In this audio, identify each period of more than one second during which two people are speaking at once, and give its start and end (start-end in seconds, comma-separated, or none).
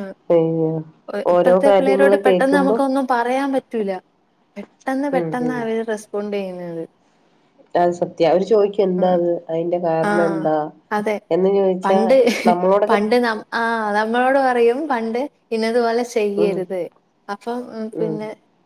1.3-2.8